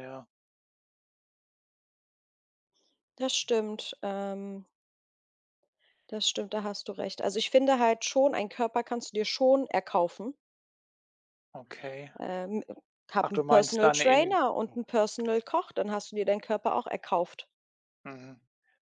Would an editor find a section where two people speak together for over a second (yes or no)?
yes